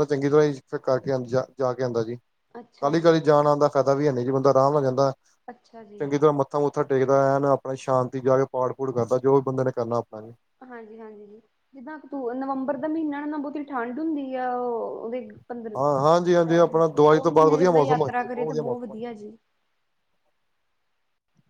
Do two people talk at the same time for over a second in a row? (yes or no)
yes